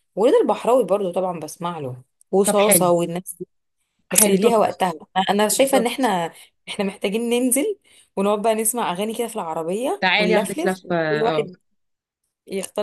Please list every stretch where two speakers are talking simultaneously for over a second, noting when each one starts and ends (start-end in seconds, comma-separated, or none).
10.0-11.4